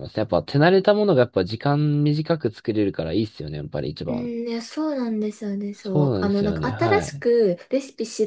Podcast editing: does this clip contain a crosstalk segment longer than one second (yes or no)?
yes